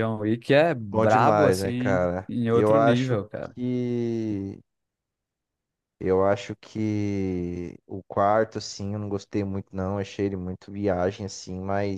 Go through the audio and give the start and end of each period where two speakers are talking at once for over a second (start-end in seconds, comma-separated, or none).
0.9-3.2